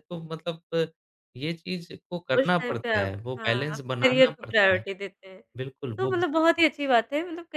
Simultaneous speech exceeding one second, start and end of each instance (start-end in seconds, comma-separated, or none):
2.4-4.8